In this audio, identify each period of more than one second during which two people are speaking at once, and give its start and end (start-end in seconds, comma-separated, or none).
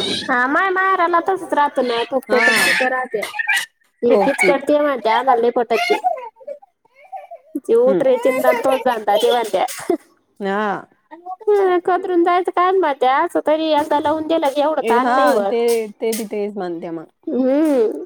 none